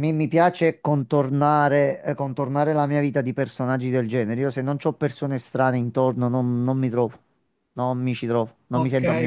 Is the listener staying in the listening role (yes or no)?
no